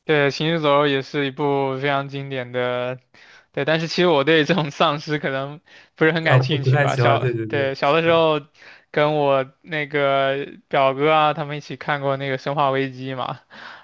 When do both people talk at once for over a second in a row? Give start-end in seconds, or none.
6.2-8.2